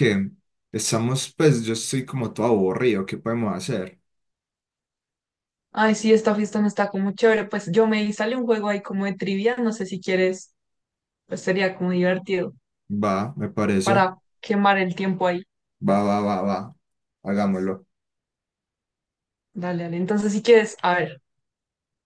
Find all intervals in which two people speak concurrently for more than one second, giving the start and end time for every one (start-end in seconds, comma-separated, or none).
none